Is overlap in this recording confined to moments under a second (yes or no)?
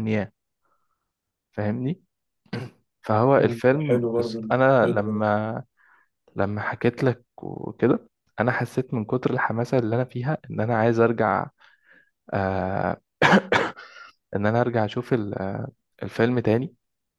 no